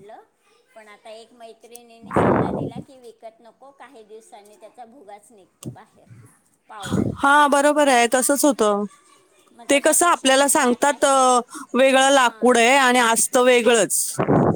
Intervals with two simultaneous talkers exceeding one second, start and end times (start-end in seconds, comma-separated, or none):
9.7-11.1